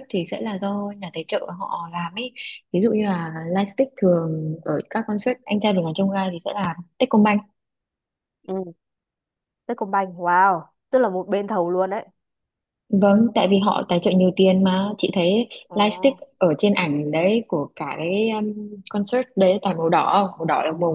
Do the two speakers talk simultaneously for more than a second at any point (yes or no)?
no